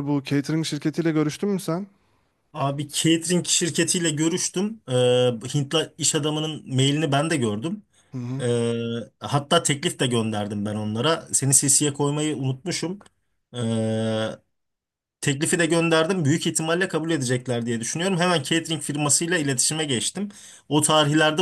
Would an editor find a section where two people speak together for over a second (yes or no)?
no